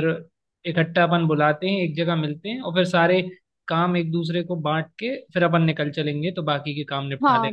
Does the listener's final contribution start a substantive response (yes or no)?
yes